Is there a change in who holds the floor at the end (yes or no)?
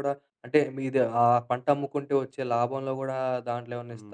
yes